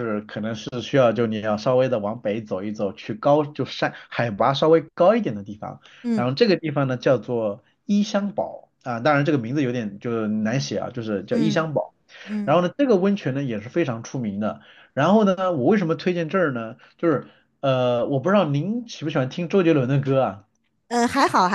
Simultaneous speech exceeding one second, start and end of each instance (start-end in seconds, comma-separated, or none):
none